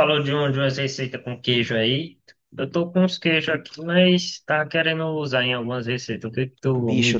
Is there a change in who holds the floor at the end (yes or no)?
yes